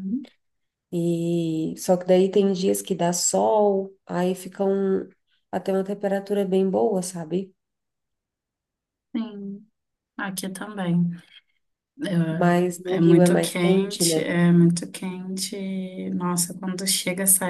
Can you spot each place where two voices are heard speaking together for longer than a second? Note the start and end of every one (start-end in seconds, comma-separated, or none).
12.8-14.3